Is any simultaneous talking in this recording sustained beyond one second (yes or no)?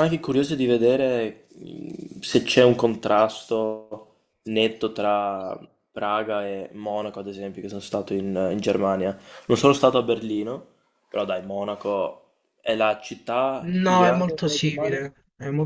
yes